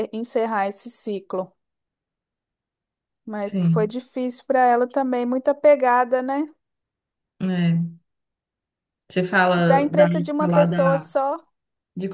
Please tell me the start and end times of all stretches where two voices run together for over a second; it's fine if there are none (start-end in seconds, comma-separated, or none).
9.6-11.1